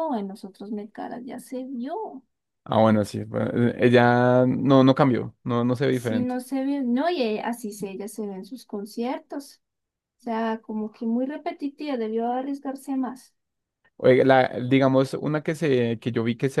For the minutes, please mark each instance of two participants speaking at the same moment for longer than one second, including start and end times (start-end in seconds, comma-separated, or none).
none